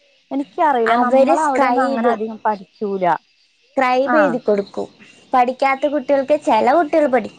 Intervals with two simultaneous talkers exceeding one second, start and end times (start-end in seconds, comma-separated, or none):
none